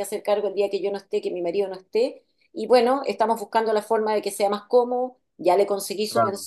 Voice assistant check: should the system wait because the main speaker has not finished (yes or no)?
yes